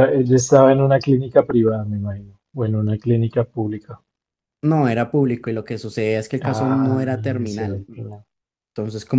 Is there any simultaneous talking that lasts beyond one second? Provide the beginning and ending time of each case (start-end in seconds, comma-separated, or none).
6.4-7.8